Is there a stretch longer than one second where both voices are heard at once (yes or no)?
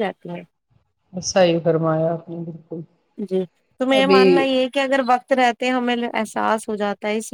no